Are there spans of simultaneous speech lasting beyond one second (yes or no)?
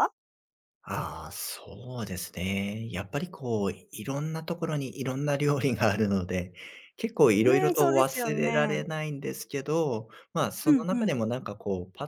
yes